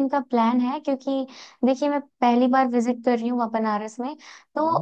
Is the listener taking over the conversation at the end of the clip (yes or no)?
no